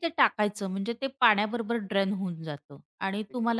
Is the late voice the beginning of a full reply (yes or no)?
no